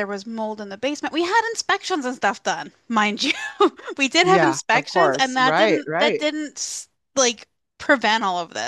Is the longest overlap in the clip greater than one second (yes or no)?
yes